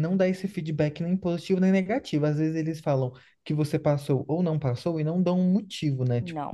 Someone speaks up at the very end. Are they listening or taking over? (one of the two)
listening